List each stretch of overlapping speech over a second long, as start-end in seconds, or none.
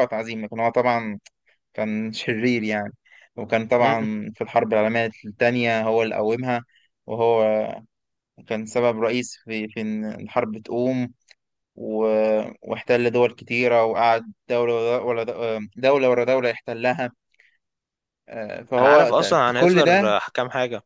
18.8-20.1